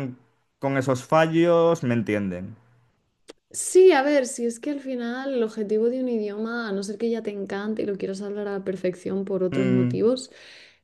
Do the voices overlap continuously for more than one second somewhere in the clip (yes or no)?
no